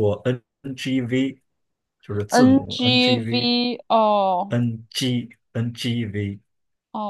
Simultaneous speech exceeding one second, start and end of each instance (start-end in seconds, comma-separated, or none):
2.3-3.5